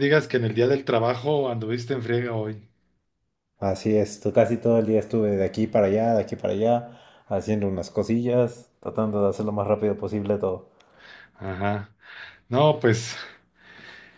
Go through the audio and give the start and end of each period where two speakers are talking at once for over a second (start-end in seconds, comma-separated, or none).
none